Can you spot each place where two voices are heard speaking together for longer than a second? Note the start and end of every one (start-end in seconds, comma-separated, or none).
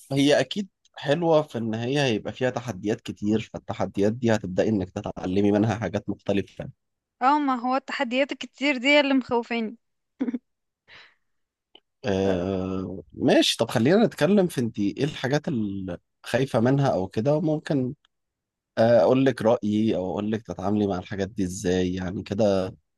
none